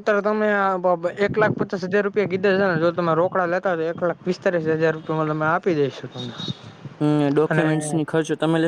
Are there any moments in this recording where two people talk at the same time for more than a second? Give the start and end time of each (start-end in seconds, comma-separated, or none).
none